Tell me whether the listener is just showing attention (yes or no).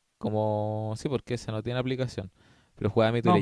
yes